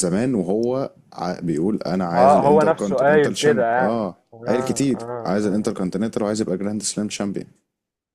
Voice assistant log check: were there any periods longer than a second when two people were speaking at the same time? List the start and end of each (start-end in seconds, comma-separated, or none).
2.2-5.7